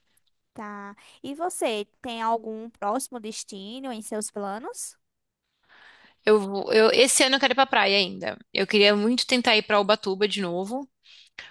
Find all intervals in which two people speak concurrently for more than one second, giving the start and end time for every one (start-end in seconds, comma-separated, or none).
none